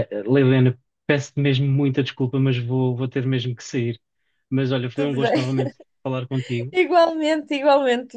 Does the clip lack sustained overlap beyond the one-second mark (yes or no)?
yes